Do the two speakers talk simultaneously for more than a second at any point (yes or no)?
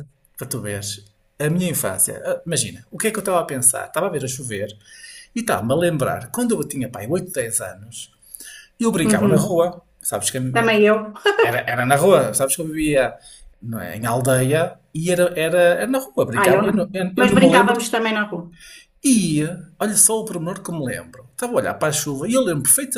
yes